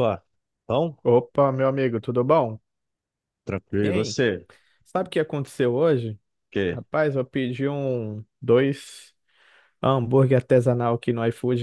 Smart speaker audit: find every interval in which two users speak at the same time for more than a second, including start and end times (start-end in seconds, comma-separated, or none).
none